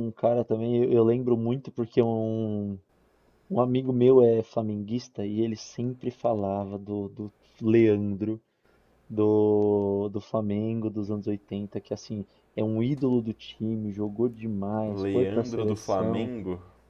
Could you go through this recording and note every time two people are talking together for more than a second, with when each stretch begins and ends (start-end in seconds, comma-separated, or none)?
14.9-16.3